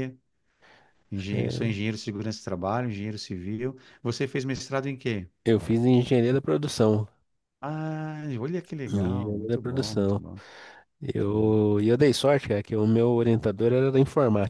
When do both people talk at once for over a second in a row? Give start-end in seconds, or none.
8.9-10.2